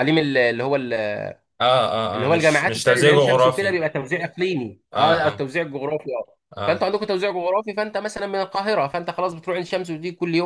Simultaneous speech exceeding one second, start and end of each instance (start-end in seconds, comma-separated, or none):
2.1-3.8